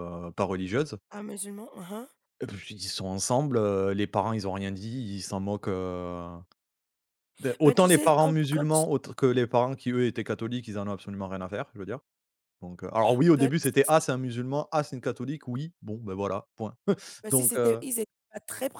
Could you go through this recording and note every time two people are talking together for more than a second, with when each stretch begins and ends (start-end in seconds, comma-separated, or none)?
7.6-8.8